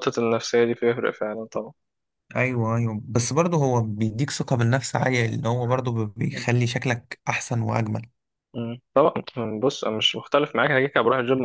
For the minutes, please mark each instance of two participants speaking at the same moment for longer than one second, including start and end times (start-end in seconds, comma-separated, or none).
none